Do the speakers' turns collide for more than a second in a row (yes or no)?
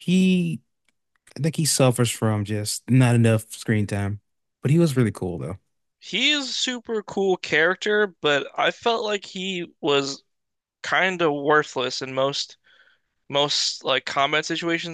no